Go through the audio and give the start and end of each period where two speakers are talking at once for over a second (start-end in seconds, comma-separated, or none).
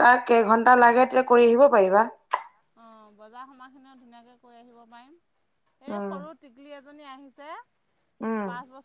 none